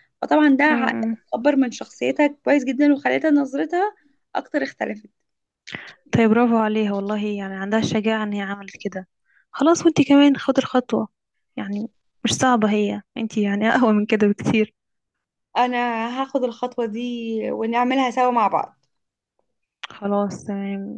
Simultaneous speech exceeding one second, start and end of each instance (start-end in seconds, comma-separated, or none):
none